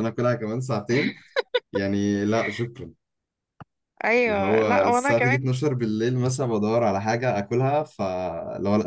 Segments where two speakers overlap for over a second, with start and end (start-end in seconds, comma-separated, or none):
4.3-5.6